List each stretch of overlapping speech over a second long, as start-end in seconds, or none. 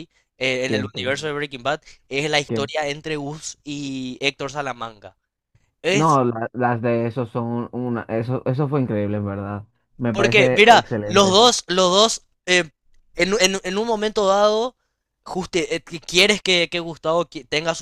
10.1-11.4